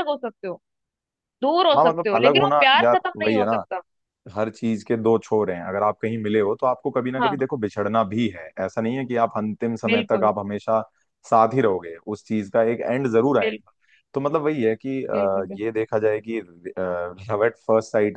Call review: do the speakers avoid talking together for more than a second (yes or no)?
no